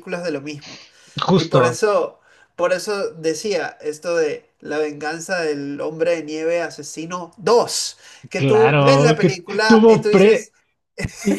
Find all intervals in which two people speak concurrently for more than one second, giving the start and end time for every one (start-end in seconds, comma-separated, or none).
8.4-10.5